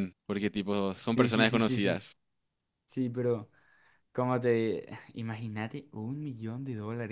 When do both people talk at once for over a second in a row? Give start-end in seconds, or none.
0.9-2.1